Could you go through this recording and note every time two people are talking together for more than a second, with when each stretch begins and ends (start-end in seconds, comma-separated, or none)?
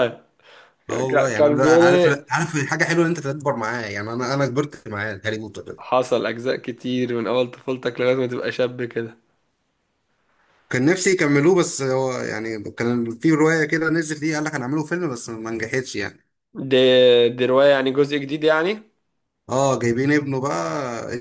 0.9-2.3